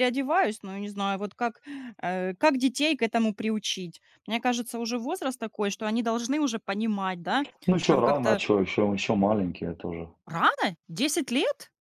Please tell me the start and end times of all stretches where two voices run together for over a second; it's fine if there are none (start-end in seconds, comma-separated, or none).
none